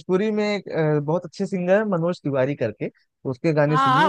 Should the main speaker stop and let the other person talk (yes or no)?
yes